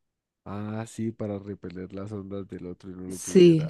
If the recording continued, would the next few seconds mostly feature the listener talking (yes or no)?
yes